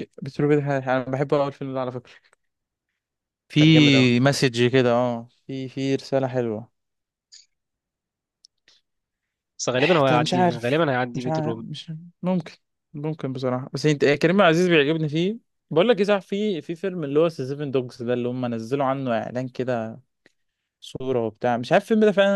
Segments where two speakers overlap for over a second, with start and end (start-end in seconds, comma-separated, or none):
9.9-11.6